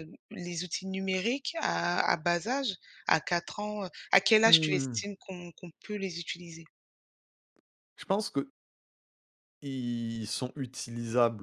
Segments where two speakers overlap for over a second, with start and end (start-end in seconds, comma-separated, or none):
none